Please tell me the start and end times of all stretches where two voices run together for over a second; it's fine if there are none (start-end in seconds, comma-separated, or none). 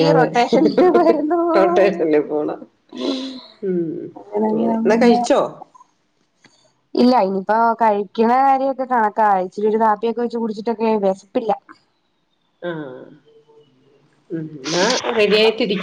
none